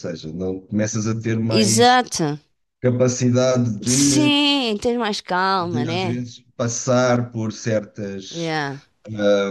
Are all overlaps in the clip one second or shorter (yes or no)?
yes